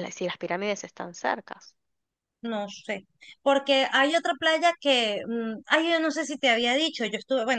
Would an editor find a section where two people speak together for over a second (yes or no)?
no